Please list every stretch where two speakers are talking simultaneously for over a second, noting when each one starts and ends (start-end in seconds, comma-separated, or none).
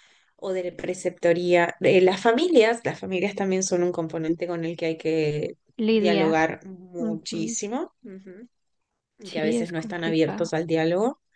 9.3-10.5